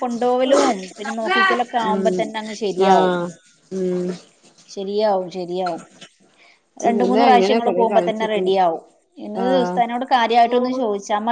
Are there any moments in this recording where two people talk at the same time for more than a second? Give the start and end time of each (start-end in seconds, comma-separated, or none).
6.9-8.5